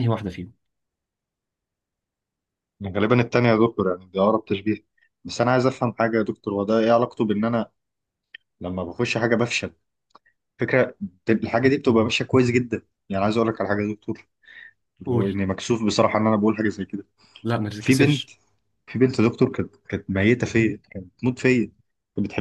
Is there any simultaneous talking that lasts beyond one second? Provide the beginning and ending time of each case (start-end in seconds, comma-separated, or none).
none